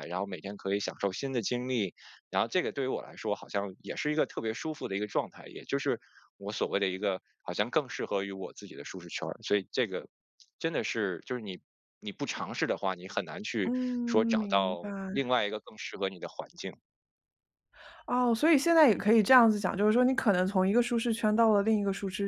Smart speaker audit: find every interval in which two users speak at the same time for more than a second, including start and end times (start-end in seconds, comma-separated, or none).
none